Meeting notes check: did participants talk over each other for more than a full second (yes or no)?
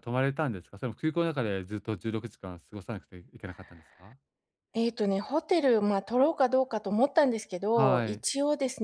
no